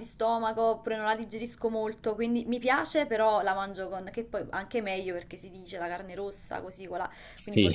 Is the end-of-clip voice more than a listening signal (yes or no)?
no